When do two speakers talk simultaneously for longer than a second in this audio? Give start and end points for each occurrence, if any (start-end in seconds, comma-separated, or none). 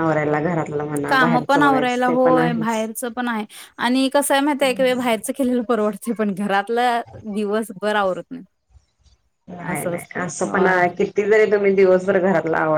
1.1-2.9